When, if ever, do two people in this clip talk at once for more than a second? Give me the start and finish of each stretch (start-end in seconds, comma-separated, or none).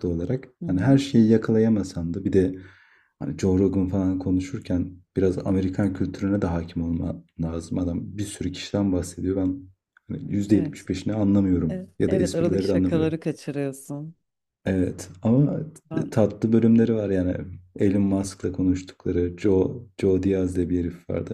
11.7-13.1